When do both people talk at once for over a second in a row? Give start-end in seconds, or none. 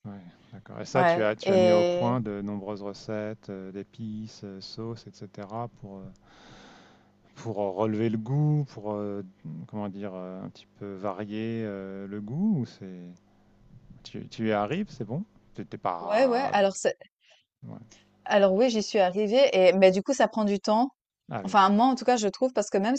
0.9-2.2